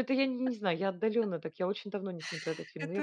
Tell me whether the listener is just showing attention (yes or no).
no